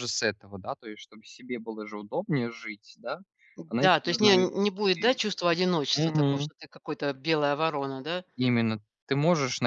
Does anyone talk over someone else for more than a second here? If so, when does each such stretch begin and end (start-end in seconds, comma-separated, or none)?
3.8-5.2